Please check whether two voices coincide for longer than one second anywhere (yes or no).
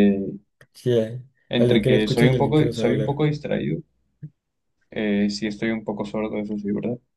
yes